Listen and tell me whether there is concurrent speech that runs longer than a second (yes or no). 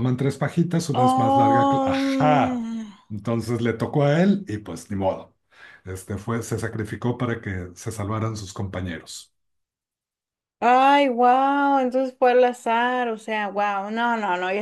yes